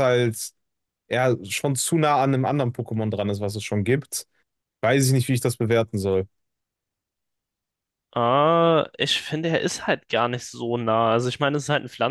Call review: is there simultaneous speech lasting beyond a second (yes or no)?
no